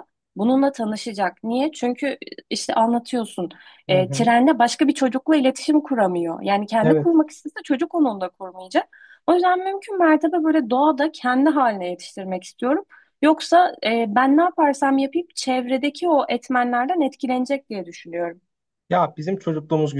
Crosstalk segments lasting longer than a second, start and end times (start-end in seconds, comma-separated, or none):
none